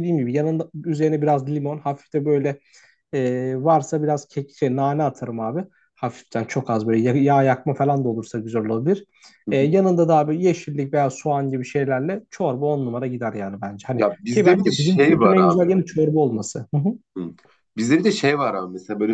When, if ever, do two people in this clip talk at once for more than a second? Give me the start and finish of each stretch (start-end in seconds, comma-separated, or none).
14.0-15.6